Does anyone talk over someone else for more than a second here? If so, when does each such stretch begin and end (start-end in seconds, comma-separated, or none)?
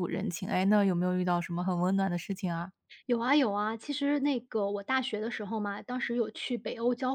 none